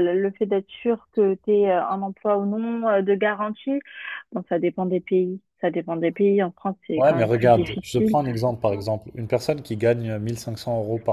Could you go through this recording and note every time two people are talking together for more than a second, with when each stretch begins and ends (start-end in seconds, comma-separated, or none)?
7.0-8.2